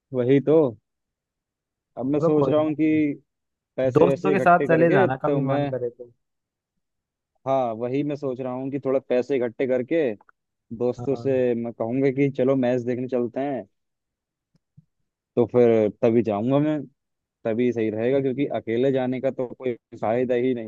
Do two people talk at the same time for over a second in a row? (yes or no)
yes